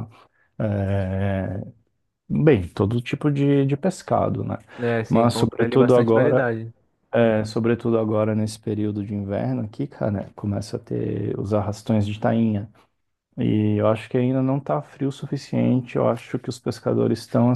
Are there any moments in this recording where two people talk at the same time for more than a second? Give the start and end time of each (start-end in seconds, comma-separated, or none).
5.1-6.5